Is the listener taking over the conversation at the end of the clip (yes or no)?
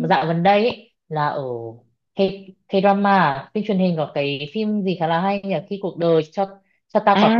yes